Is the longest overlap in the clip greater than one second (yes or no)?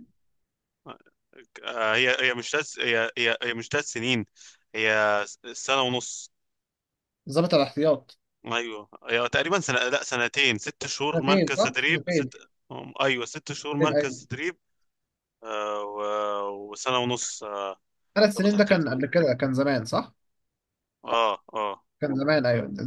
yes